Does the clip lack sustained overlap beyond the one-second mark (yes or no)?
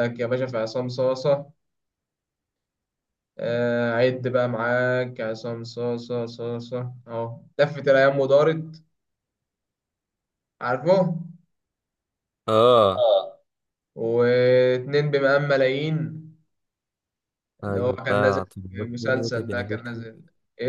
no